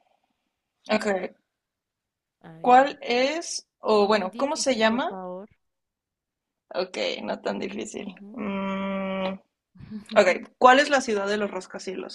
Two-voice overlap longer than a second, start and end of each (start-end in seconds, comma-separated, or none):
4.0-5.2